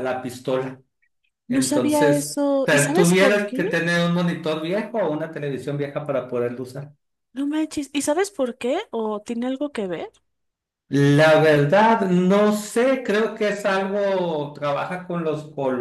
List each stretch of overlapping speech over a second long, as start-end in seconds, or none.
1.5-3.6